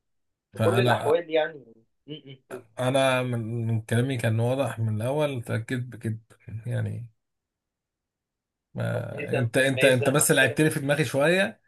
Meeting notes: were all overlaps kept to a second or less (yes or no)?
no